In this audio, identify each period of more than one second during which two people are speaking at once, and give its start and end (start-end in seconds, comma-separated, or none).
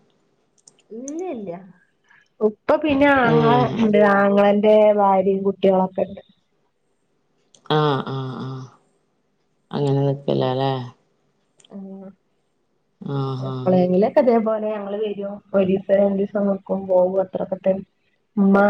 none